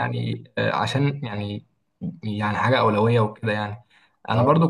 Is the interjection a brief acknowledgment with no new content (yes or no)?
yes